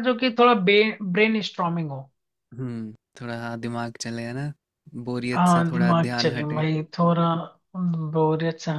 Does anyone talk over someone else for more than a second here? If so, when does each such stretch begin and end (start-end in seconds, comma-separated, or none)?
5.3-6.6